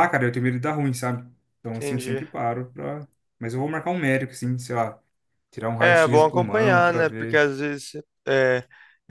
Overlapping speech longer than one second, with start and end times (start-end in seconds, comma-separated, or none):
5.8-7.5